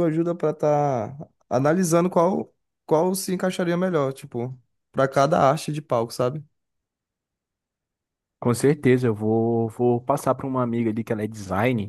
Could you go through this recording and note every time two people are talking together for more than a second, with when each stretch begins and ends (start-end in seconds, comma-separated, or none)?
none